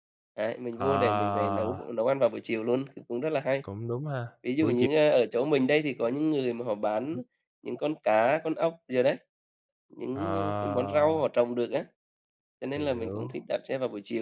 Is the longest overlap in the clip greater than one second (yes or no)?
no